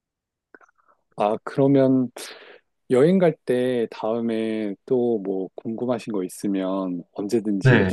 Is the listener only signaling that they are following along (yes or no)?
yes